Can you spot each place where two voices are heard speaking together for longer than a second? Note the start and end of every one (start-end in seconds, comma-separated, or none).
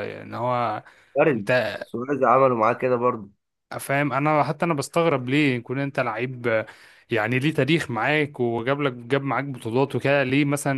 none